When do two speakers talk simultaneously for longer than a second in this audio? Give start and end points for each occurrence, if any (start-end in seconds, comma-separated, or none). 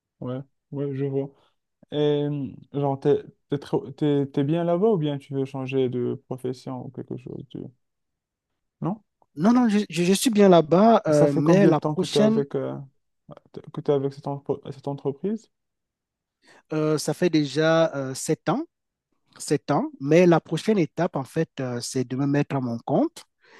11.1-12.4